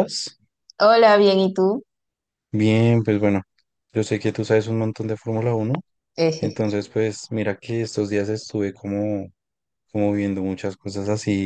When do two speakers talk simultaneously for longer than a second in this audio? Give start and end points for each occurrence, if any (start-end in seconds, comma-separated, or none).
none